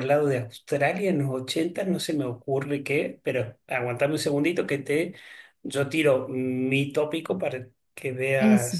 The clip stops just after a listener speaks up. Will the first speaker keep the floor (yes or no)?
yes